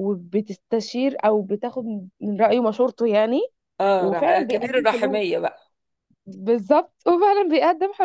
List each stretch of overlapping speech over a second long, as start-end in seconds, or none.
4.0-5.2